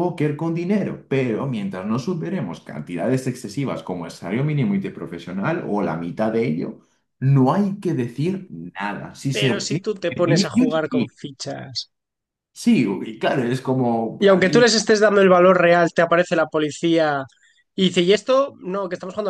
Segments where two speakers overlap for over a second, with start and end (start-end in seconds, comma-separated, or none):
9.3-11.2